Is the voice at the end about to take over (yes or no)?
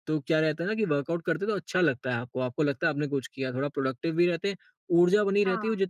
no